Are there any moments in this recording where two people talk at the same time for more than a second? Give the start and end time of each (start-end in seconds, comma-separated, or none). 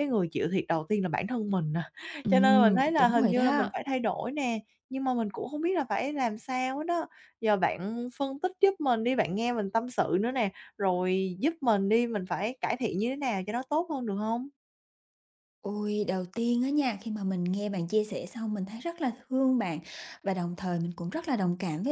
2.3-3.7